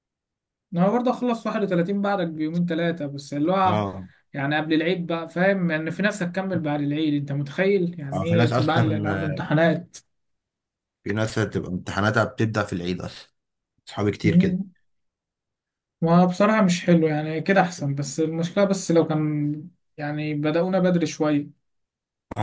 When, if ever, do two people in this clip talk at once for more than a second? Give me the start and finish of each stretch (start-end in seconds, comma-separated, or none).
8.1-9.5